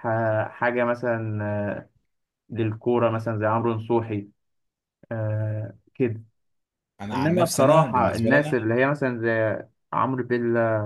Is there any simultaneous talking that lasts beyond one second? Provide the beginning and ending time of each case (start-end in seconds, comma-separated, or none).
7.1-8.6